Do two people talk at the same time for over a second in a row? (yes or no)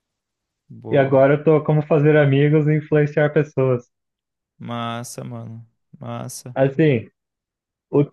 no